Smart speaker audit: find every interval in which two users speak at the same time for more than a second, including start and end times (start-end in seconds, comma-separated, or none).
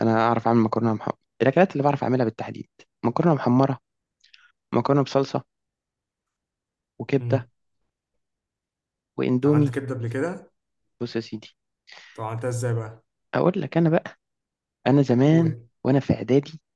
none